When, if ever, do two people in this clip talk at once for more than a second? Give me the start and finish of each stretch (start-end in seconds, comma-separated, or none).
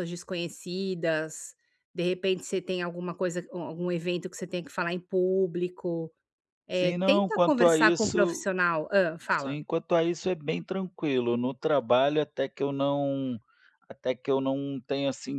6.7-8.5